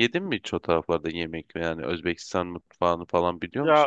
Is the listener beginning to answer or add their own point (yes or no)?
yes